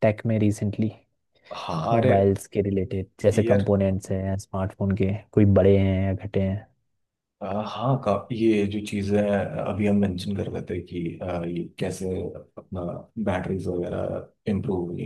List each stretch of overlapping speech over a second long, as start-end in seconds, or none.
none